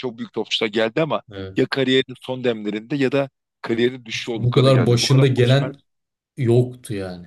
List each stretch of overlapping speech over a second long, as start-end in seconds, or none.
4.1-5.7